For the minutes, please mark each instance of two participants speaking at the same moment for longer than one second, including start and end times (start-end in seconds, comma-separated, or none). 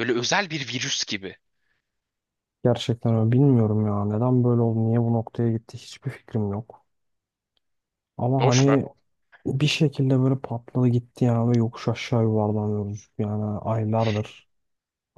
none